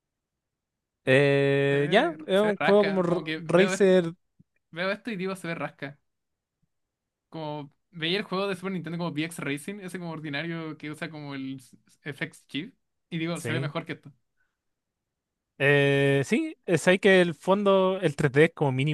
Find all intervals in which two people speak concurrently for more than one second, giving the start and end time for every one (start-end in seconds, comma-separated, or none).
1.7-3.9